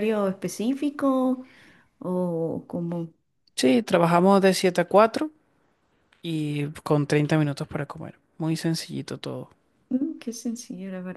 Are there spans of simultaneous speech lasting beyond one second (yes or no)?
no